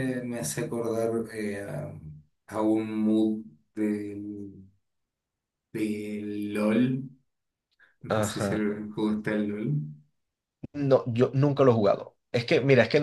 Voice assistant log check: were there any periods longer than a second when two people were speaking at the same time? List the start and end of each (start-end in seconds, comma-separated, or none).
none